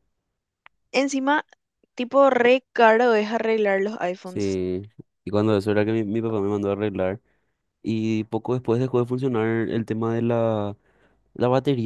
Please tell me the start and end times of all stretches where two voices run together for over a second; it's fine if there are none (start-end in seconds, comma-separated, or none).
none